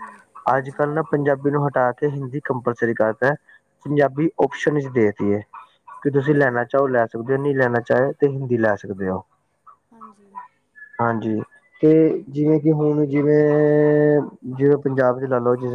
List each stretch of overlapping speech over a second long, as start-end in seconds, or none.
none